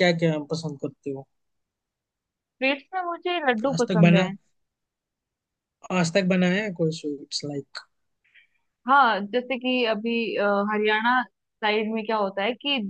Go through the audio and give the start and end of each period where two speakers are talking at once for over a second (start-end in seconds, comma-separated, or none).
none